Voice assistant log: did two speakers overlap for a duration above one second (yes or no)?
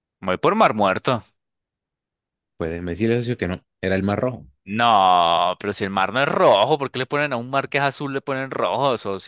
no